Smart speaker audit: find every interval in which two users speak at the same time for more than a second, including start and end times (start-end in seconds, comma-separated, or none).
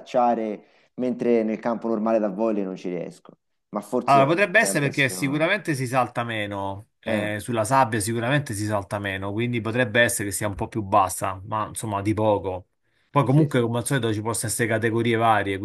4.0-5.5